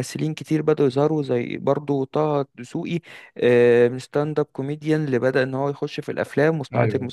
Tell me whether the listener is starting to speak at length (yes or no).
yes